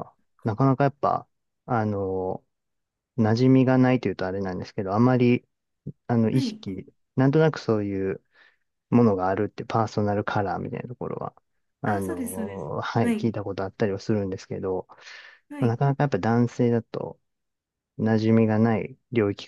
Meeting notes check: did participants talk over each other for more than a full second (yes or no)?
yes